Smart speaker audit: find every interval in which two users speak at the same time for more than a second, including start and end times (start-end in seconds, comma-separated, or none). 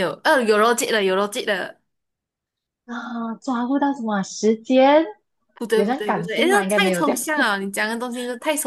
5.7-7.2